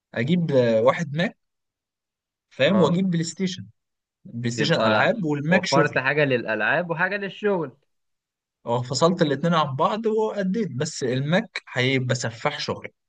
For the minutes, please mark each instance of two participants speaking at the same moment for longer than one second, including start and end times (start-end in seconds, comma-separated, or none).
4.6-6.0